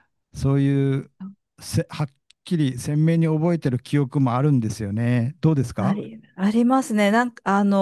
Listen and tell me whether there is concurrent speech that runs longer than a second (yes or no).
no